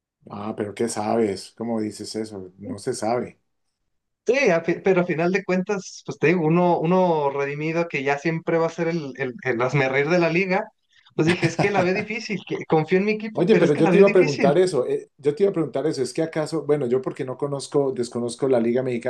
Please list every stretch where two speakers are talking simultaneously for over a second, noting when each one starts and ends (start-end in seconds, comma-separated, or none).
13.4-14.6